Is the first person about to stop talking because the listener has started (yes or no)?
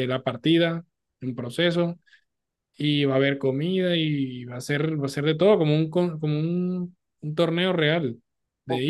yes